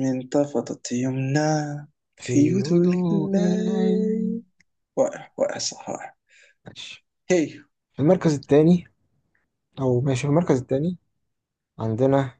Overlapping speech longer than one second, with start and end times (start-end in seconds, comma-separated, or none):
2.2-4.1